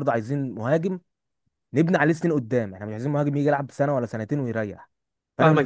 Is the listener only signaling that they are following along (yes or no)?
no